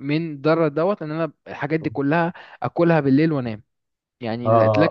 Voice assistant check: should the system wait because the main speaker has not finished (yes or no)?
no